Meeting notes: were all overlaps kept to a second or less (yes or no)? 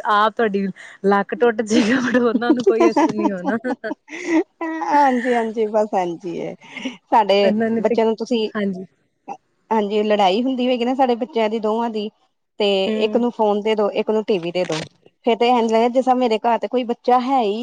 yes